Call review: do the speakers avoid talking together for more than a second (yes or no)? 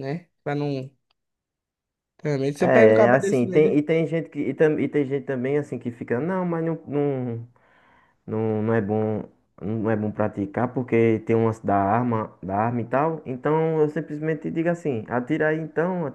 no